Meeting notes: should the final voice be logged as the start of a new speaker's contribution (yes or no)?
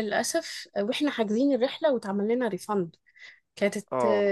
no